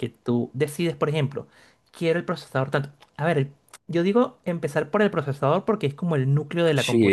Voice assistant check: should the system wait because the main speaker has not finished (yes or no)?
no